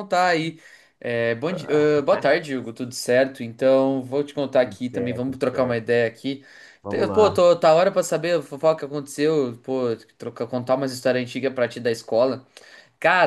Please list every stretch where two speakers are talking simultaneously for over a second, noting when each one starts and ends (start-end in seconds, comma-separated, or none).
4.6-6.0